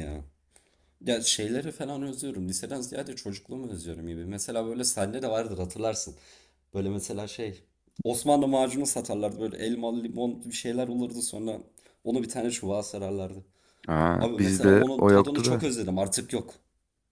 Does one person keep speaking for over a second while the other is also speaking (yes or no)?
yes